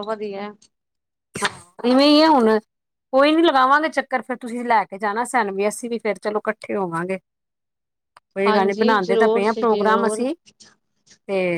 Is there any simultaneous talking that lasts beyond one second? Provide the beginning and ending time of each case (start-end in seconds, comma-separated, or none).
8.5-10.3